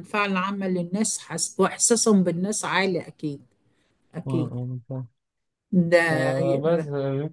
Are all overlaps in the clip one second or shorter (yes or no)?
yes